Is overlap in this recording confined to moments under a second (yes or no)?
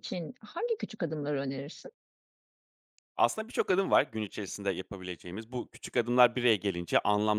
yes